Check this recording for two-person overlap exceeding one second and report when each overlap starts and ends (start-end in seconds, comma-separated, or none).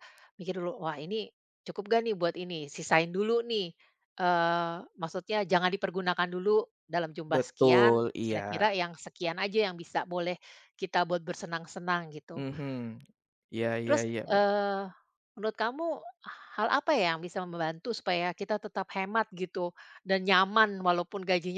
7.3-8.7